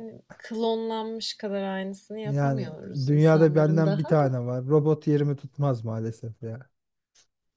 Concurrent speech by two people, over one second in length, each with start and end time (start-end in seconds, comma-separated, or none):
2.2-4.4